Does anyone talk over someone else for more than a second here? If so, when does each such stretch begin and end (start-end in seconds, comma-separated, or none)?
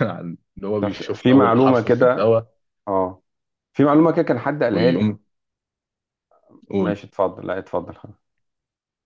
0.8-2.4